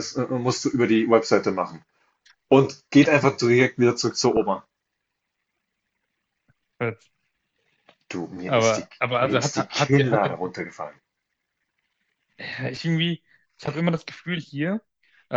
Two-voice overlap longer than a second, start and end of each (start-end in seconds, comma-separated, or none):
8.4-10.2